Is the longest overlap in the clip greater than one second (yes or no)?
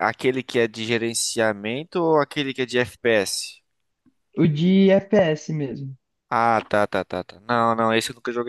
no